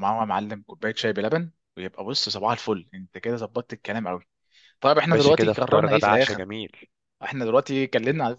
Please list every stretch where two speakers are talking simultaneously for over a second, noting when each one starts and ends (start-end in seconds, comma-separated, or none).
5.1-6.5